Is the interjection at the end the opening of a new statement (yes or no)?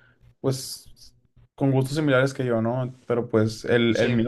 no